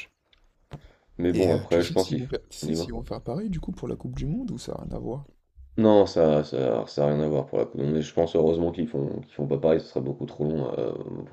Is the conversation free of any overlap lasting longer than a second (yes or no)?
no